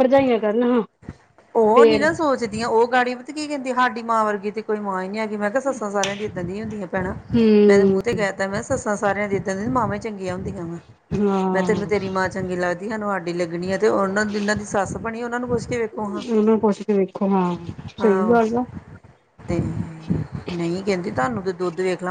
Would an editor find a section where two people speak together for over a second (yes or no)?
no